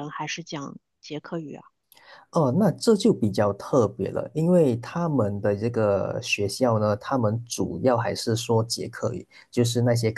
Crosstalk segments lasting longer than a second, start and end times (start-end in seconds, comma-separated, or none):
none